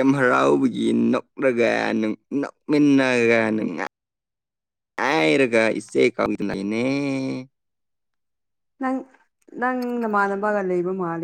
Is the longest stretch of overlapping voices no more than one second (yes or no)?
yes